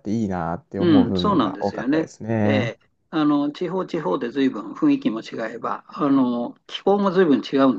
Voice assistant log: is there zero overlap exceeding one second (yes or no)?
no